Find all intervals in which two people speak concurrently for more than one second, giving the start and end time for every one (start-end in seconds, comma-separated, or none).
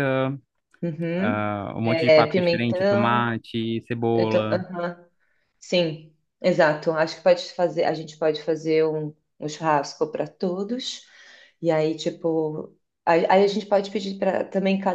1.2-3.3